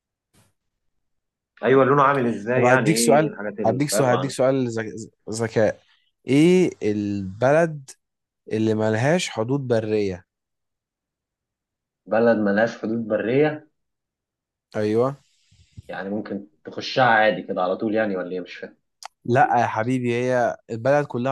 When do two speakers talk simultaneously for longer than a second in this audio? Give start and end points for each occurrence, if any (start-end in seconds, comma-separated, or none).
2.5-4.3